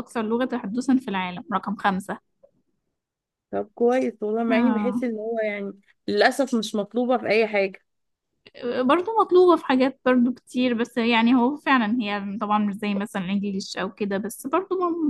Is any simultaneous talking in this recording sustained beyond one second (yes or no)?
no